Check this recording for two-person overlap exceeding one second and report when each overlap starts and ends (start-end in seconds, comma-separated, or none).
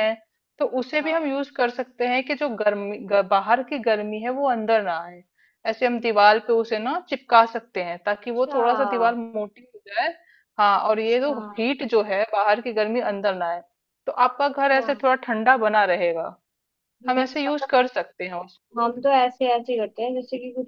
none